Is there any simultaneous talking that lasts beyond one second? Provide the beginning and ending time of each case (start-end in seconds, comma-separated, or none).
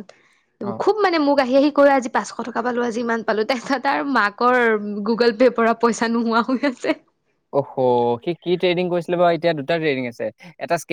none